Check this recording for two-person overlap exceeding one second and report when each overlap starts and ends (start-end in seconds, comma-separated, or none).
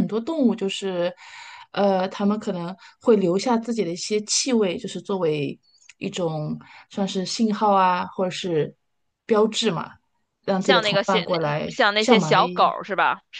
10.6-12.7